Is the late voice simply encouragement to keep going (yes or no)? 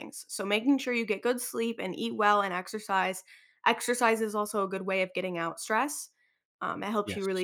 yes